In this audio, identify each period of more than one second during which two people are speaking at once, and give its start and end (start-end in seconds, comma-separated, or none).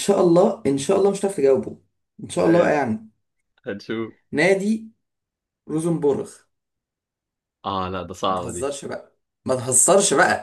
none